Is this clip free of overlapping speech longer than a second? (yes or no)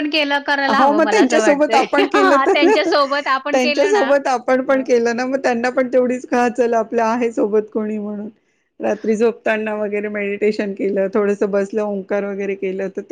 no